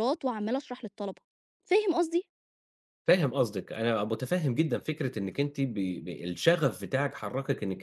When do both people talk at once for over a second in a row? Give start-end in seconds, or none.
none